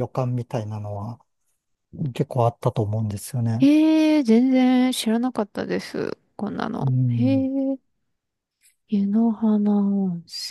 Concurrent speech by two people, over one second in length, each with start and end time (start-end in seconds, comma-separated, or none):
none